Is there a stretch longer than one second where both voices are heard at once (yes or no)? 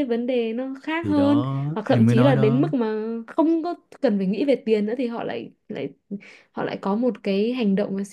yes